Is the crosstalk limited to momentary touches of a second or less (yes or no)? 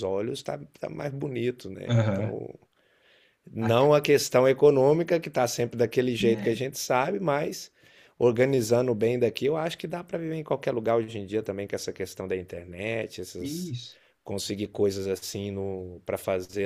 yes